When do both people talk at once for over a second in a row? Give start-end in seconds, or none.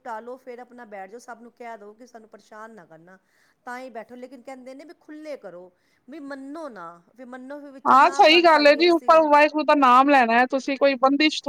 7.9-9.2